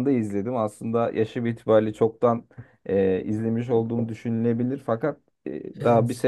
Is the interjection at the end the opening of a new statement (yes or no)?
no